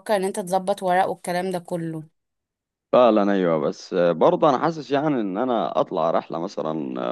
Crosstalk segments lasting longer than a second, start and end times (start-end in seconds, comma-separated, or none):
none